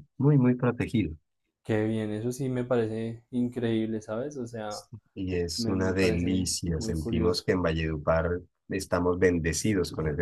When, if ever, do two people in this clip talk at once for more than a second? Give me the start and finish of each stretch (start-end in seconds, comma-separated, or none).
5.6-7.5